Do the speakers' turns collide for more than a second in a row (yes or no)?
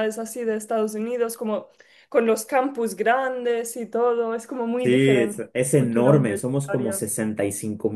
yes